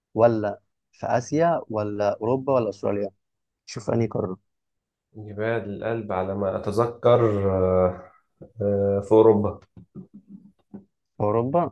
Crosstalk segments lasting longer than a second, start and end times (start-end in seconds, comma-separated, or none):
none